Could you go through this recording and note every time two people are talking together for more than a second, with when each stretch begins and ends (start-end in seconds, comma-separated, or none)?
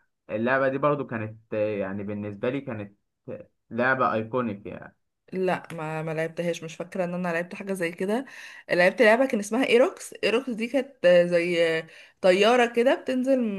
none